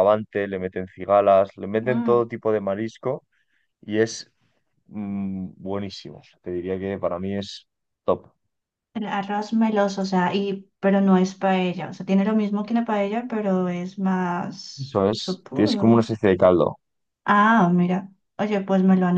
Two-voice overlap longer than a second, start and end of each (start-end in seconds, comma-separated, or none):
14.8-16.1